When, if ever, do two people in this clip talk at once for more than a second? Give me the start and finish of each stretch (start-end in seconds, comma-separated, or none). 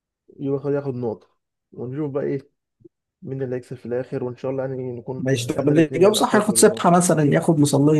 5.2-6.8